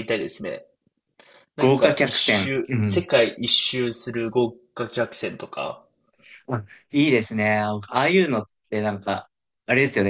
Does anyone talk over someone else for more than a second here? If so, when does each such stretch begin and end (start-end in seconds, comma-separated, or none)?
1.6-3.0